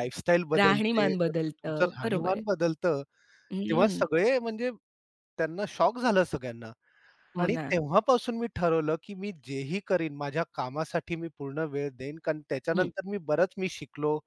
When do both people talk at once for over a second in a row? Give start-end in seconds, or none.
0.6-2.4